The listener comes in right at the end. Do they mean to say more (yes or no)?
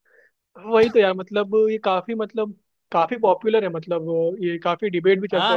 yes